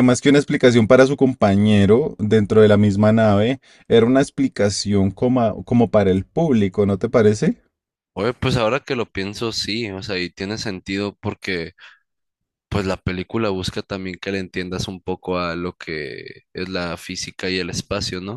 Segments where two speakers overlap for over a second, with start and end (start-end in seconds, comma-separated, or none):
none